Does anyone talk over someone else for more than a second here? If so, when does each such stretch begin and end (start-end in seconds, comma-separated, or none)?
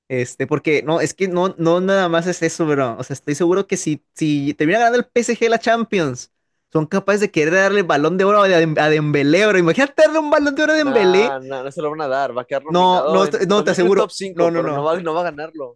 12.7-14.9